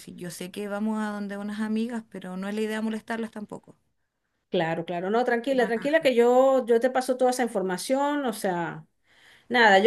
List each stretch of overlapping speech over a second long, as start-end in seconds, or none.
none